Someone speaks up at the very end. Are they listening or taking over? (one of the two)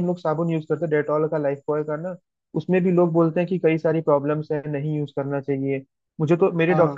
listening